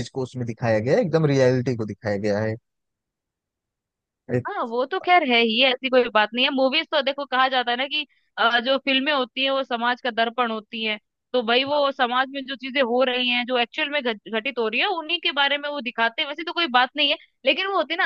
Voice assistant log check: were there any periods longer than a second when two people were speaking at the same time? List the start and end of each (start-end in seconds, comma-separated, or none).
none